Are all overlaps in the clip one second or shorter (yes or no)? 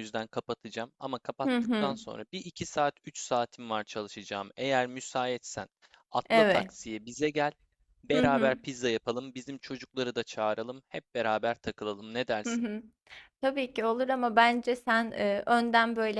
yes